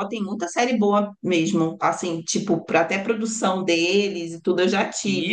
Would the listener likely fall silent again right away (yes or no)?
yes